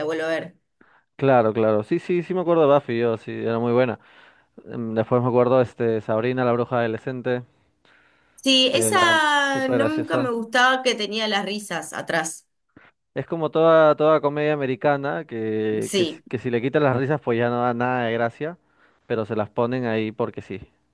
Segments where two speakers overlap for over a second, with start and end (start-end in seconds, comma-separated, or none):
8.7-10.3